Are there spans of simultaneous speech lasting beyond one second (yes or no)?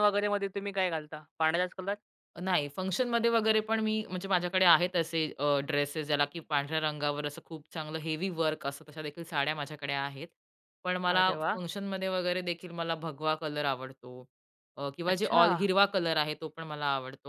no